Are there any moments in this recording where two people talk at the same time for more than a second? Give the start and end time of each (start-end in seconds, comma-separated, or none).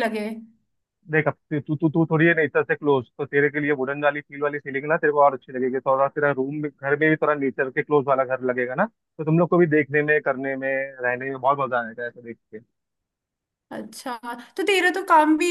none